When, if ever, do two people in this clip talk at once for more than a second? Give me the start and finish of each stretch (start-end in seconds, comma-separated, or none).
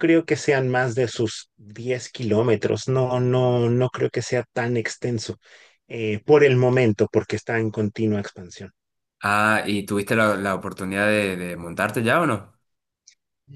none